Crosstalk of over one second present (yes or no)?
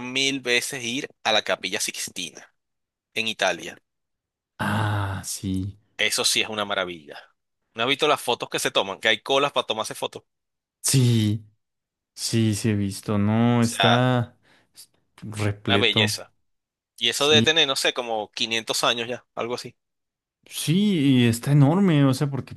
no